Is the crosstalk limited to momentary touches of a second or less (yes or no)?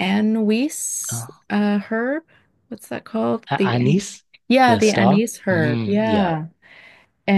no